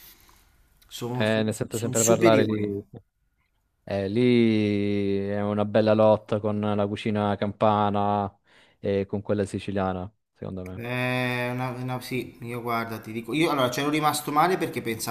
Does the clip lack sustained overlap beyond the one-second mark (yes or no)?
no